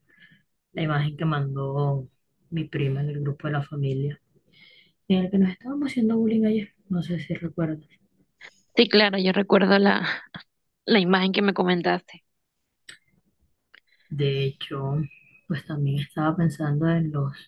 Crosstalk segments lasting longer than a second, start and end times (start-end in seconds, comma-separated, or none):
none